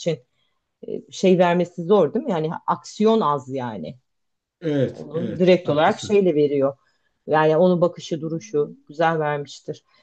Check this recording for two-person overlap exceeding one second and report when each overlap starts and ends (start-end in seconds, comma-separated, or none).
4.9-6.2